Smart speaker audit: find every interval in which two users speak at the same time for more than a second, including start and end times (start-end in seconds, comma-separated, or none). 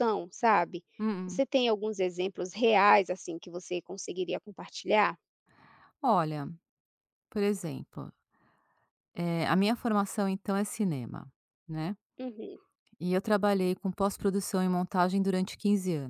none